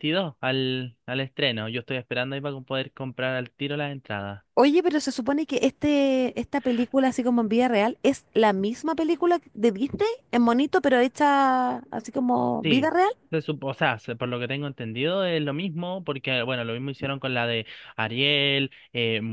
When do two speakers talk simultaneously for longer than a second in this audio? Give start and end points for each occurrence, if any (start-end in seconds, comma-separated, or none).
none